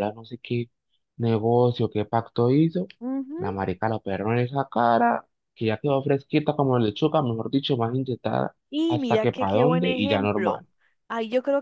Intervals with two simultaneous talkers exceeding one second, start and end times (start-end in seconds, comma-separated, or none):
8.7-10.7